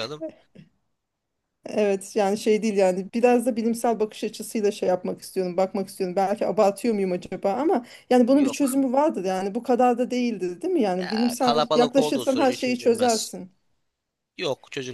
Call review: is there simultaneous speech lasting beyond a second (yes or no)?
yes